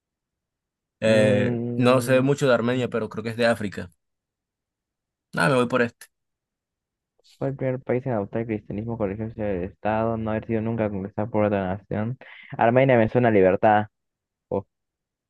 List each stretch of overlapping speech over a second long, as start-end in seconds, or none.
1.1-2.2